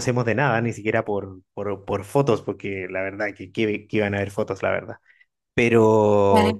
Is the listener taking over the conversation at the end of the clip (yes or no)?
no